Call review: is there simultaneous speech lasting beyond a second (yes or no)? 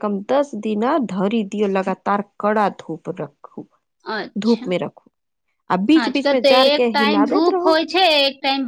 yes